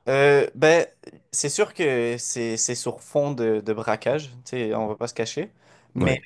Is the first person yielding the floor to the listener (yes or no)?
no